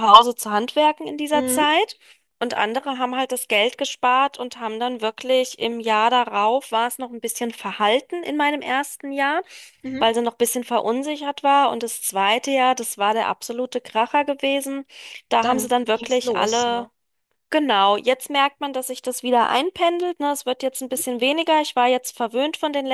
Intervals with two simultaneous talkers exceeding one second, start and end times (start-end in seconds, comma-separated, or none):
15.4-16.9